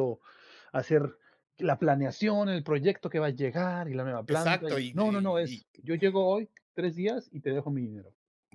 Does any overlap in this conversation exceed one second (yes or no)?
yes